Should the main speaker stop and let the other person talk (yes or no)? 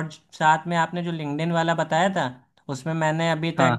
no